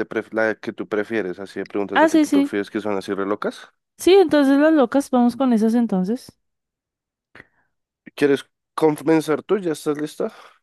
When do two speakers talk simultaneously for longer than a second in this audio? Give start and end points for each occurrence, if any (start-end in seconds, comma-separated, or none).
none